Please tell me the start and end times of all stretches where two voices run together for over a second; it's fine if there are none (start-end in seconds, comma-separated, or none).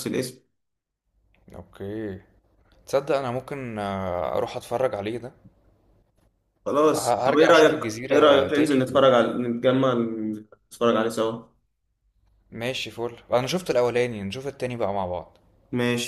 6.9-9.0